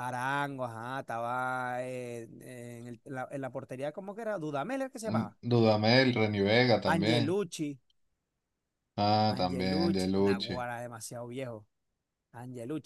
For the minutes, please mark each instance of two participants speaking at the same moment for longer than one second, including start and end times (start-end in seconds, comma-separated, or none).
9.3-10.6